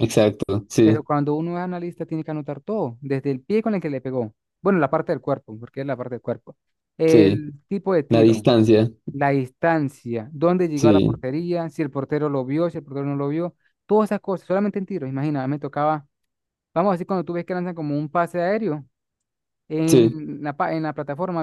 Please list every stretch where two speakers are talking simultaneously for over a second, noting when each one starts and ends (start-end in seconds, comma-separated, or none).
none